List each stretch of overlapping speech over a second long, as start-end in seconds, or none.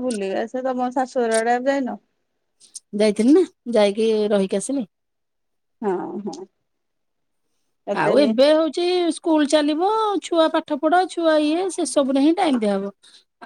none